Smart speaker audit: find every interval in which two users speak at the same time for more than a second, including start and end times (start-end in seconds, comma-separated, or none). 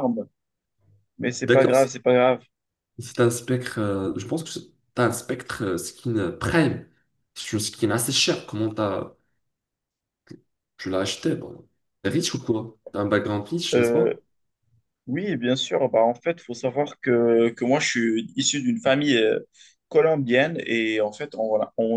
none